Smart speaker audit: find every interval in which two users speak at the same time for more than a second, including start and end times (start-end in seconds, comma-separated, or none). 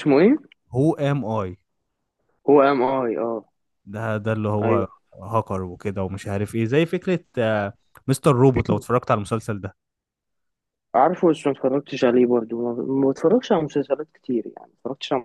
none